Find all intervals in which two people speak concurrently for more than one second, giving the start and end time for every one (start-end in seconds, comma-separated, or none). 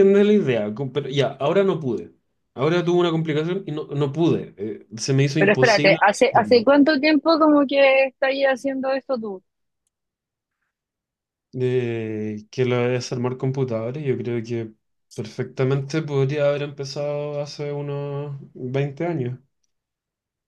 5.4-6.7